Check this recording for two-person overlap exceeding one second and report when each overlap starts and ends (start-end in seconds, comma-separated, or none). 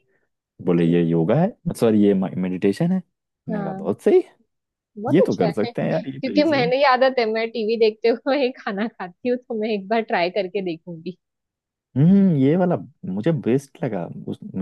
5.1-6.7